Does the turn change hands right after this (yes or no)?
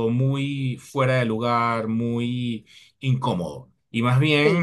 no